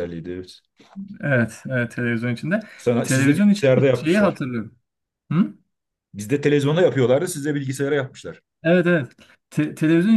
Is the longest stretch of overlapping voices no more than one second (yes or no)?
no